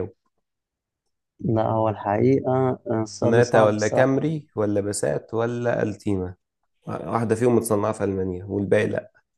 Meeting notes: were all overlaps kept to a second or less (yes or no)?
no